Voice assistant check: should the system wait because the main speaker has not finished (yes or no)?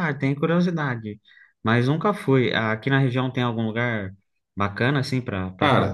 no